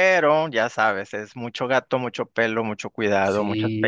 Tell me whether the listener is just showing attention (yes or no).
no